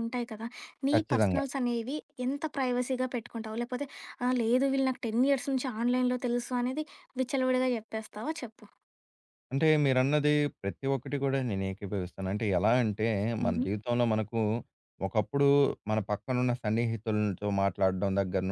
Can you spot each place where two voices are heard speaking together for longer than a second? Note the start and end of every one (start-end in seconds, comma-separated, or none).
none